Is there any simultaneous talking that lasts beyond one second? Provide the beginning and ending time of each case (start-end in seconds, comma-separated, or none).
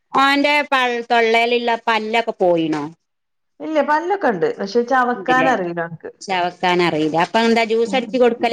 none